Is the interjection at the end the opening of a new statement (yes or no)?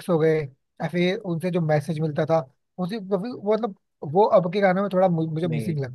yes